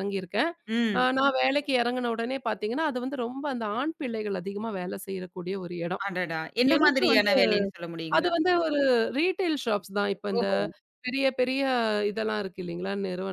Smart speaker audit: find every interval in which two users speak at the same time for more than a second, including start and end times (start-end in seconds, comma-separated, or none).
none